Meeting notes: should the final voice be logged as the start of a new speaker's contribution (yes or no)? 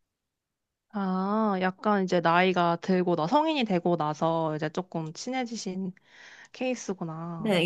yes